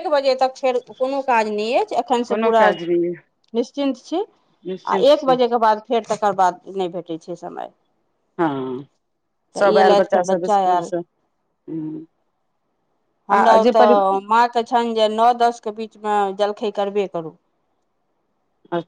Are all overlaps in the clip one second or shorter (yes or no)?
no